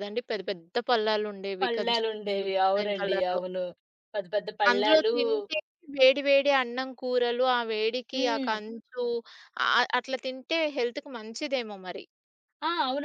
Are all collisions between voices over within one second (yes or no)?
no